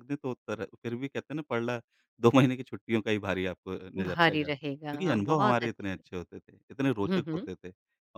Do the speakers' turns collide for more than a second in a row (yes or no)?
yes